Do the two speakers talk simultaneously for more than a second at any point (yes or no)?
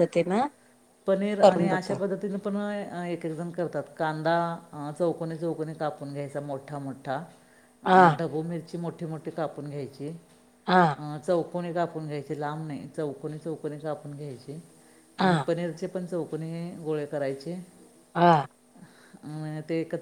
no